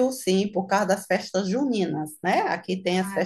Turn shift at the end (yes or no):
no